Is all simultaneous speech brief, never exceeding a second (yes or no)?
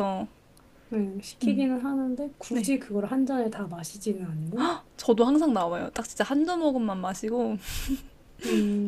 yes